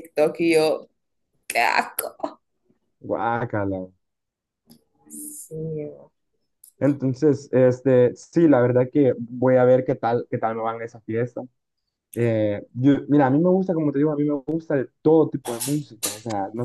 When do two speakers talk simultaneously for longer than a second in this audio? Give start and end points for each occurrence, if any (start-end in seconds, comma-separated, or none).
none